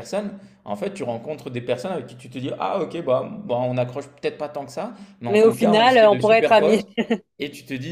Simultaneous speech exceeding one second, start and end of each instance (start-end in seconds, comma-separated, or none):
5.3-6.8